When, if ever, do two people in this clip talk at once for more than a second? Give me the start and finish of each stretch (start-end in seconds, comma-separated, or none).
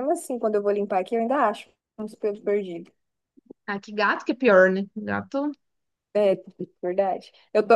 none